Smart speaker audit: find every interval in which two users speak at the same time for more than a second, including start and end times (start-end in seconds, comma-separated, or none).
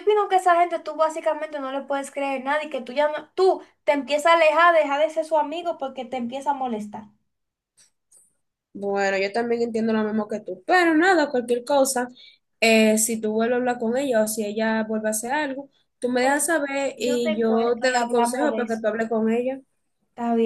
17.0-18.8